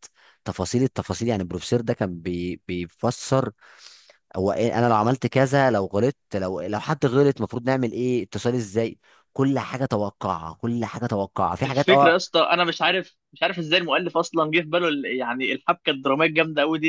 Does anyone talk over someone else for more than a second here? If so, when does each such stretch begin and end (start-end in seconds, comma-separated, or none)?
none